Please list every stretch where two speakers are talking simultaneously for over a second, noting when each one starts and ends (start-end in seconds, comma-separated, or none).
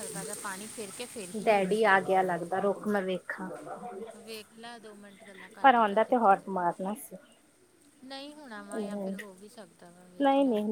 none